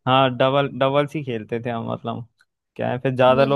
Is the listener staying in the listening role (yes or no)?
yes